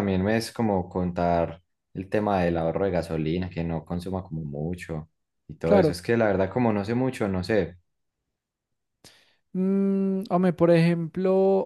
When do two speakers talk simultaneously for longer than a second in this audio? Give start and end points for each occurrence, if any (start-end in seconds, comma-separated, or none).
none